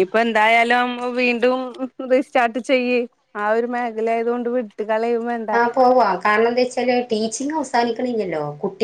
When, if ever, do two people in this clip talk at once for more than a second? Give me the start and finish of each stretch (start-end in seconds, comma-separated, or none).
none